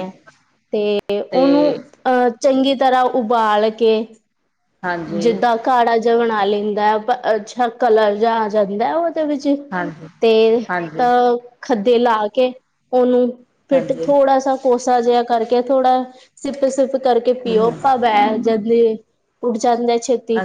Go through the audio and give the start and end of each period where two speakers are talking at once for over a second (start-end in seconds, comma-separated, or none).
none